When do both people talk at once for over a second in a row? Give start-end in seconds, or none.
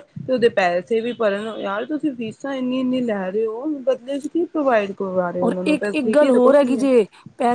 5.4-6.9